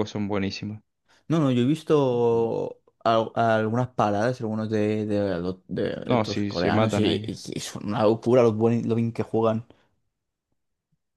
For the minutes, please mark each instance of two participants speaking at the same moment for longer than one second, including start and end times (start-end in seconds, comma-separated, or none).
6.0-7.3